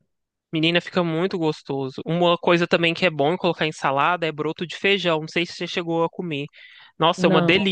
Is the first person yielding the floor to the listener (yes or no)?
no